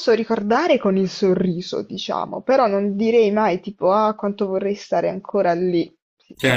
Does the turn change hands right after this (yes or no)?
yes